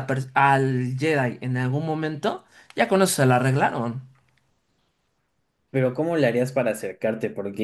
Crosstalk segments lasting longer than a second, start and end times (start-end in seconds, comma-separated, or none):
none